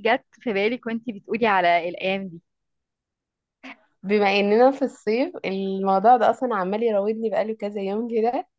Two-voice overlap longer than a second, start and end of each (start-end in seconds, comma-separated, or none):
none